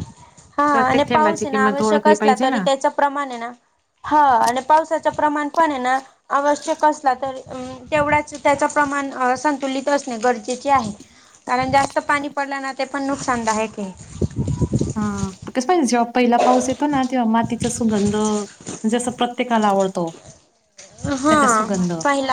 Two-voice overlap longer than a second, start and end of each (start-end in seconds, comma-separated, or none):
0.7-2.6